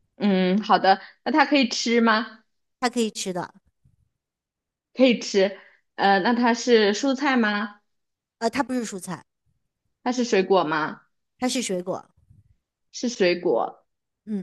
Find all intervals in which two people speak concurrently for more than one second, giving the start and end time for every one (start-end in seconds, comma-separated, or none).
none